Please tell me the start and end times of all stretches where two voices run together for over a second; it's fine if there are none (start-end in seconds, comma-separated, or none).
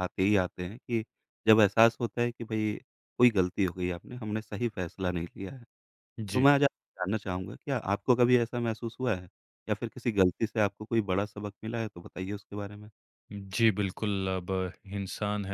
none